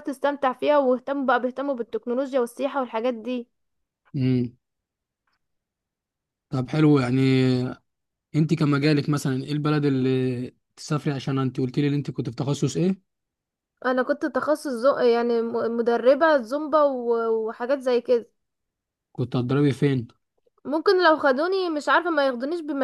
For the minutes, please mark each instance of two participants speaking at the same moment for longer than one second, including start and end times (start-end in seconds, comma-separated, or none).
none